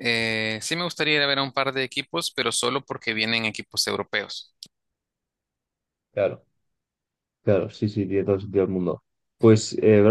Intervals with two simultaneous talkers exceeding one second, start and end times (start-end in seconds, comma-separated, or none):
none